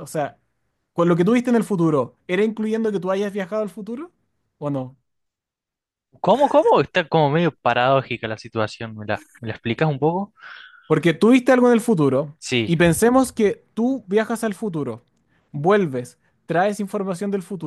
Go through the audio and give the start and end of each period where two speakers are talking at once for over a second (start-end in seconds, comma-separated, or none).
none